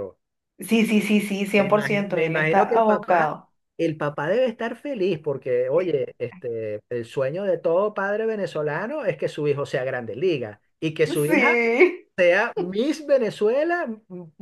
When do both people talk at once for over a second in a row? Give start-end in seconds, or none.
1.6-3.3